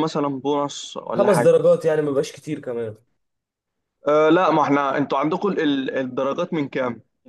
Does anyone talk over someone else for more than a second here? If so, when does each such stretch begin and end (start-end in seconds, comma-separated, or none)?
none